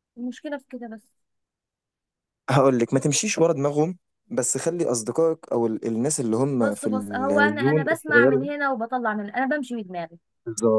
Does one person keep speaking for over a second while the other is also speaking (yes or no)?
yes